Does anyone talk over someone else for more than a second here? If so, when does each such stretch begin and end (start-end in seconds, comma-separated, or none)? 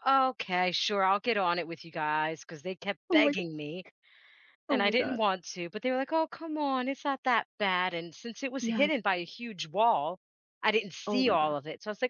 none